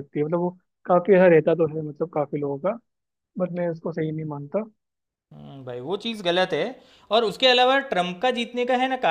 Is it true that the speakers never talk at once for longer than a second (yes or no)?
yes